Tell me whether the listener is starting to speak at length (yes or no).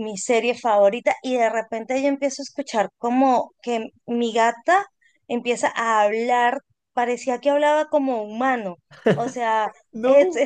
no